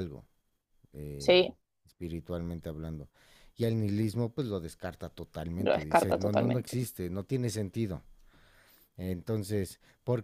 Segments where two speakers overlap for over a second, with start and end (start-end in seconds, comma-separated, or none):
5.6-6.8